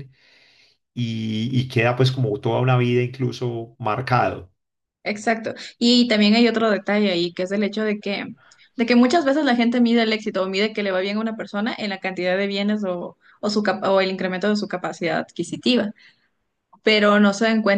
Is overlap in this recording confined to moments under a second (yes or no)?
yes